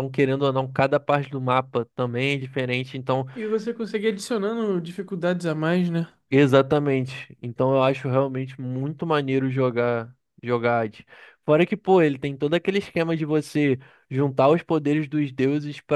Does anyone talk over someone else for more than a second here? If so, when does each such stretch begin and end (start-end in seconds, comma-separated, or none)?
none